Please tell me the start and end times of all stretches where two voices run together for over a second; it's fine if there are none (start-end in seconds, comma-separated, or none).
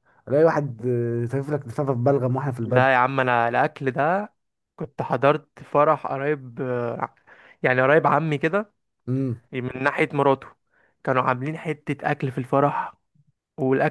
none